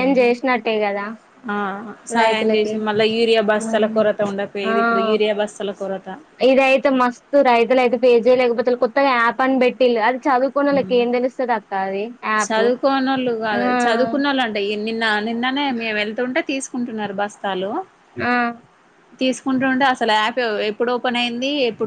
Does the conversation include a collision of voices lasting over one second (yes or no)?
no